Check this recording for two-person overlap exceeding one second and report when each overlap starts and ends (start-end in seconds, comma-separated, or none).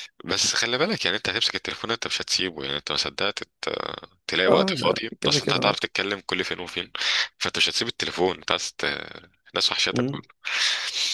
4.5-5.8